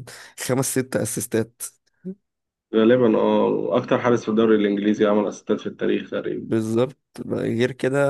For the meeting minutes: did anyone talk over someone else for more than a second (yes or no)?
no